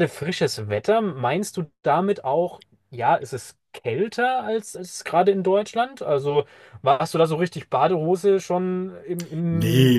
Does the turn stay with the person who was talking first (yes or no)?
no